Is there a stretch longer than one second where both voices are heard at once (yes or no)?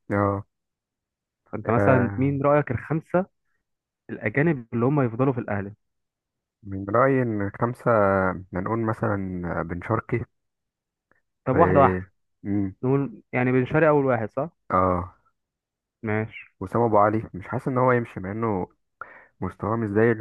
no